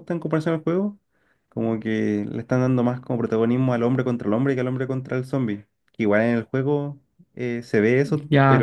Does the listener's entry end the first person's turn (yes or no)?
no